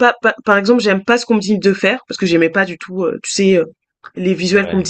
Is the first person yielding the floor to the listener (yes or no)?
no